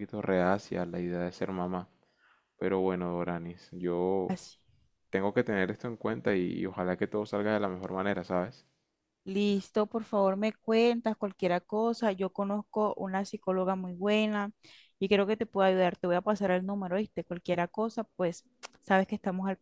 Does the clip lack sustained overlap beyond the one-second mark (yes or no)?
yes